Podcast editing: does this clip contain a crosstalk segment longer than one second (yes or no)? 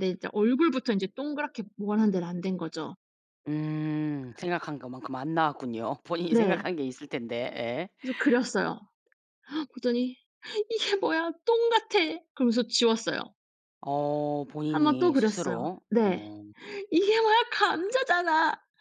yes